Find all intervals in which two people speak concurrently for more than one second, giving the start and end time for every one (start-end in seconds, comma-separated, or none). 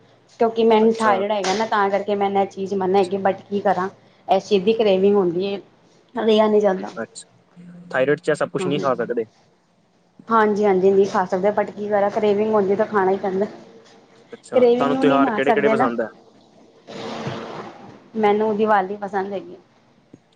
14.5-15.9